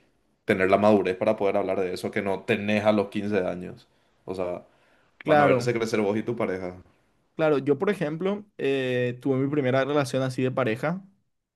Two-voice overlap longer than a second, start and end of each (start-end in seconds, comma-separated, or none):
none